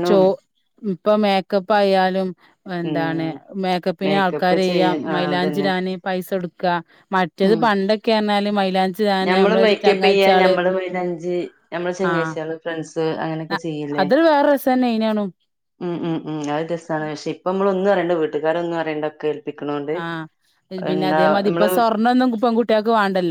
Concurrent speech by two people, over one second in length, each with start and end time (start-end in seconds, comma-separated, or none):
4.0-5.7